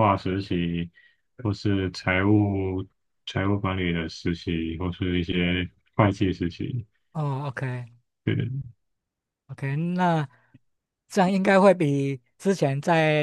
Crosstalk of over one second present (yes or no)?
no